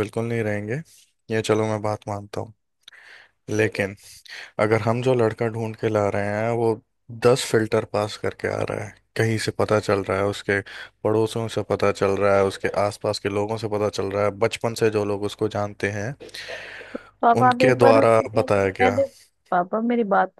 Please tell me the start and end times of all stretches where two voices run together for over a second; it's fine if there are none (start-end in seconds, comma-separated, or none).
17.4-19.0